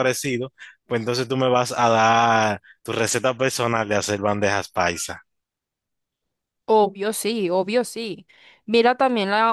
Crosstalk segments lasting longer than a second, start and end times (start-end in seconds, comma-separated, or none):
none